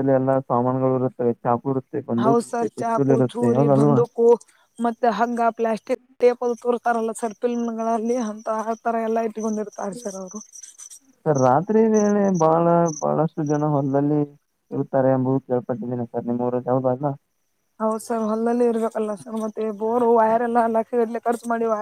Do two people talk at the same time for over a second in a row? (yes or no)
no